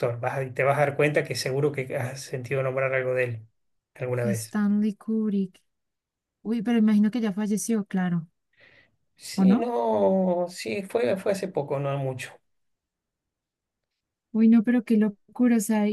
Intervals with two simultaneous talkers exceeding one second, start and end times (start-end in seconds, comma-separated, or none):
none